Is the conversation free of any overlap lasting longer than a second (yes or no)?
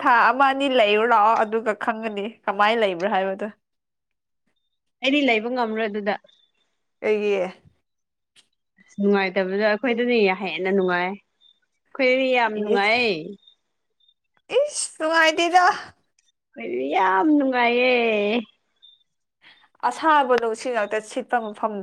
yes